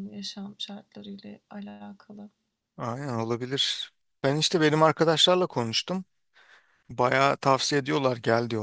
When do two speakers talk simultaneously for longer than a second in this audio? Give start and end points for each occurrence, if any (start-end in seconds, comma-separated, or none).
none